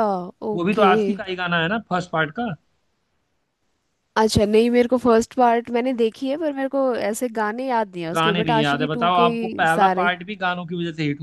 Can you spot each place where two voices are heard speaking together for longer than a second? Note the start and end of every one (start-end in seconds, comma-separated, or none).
8.2-10.1